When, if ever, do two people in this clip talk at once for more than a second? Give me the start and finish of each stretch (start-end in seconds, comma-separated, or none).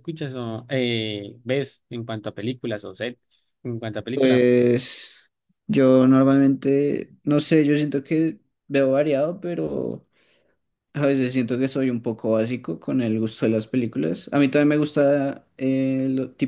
none